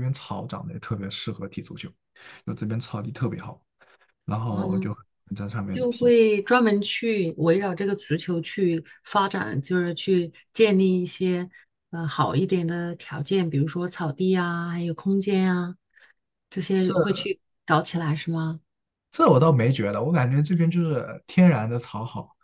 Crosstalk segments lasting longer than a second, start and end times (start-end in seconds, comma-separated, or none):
none